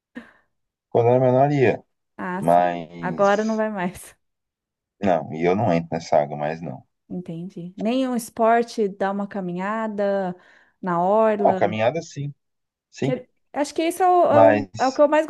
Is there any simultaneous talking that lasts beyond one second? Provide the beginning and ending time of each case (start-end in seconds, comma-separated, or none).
2.4-3.6